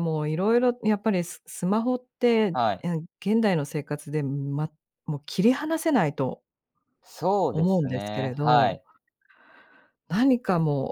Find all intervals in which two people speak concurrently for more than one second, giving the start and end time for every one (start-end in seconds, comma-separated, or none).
7.5-8.8